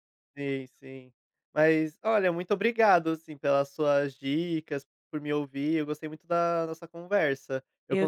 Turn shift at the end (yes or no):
no